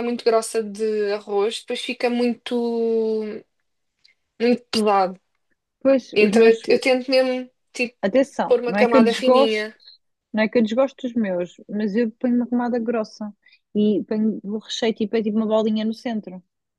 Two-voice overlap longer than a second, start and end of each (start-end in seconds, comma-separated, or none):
8.5-9.7